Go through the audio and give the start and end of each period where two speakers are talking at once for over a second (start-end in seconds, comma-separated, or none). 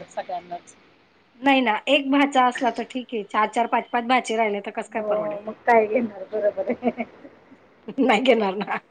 none